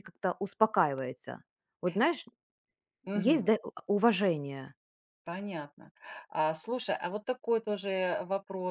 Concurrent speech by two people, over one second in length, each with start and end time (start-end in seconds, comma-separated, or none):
none